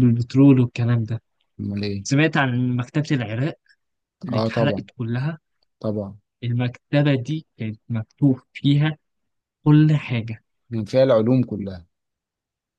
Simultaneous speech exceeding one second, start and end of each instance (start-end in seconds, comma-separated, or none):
none